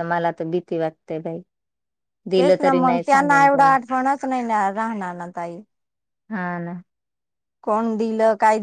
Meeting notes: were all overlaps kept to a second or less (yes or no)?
no